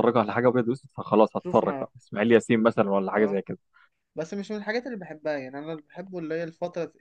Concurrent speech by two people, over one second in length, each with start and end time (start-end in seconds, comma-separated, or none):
none